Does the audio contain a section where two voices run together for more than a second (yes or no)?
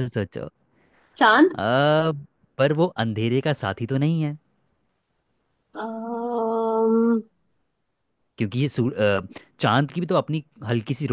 no